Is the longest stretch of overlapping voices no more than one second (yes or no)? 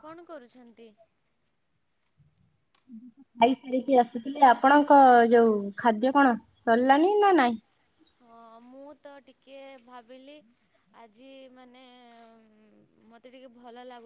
yes